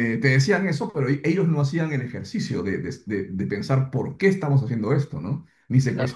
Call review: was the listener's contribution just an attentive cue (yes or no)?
yes